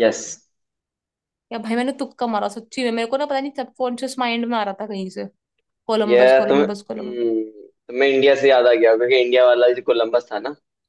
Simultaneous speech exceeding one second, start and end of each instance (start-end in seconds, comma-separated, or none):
6.1-7.3